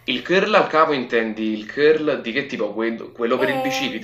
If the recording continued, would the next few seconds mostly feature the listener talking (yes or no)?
yes